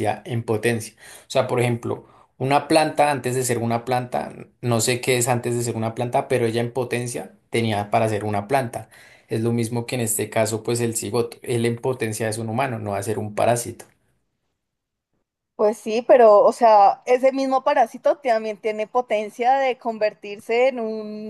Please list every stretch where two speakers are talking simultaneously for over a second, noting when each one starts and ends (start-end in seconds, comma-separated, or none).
none